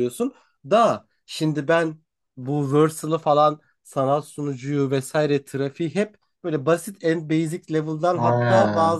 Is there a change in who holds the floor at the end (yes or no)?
no